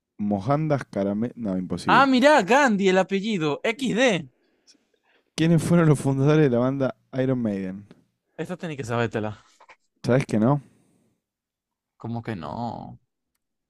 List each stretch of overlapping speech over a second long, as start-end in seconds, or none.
none